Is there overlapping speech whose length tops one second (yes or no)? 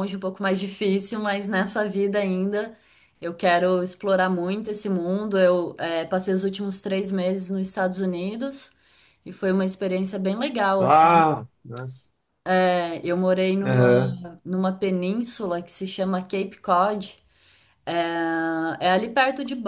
no